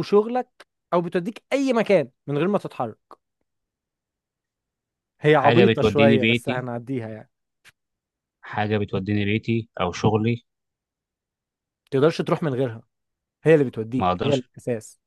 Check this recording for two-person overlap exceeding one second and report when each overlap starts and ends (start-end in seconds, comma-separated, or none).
5.3-6.6